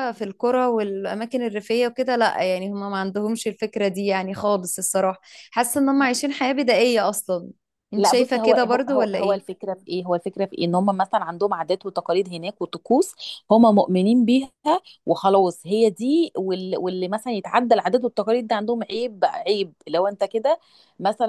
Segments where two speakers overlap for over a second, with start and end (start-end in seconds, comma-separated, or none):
8.0-9.4